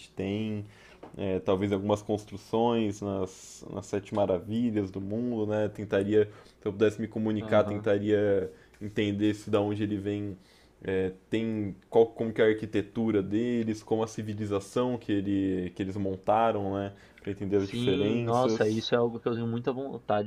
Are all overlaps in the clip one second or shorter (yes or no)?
no